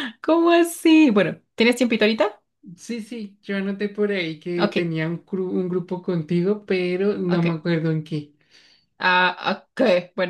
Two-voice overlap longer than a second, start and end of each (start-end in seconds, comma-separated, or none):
none